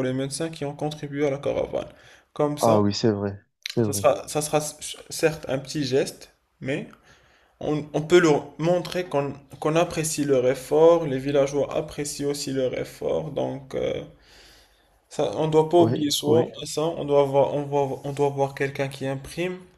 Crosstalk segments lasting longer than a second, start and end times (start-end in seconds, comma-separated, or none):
none